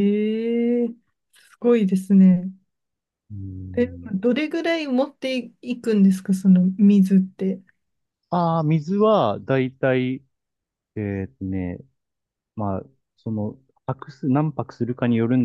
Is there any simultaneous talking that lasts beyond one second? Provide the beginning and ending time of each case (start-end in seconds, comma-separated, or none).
none